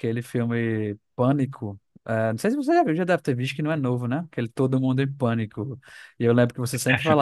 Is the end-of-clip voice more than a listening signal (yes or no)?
no